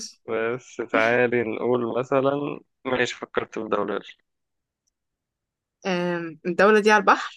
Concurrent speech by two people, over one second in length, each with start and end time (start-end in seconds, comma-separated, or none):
none